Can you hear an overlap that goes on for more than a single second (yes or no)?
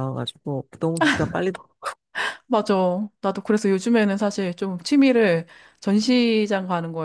no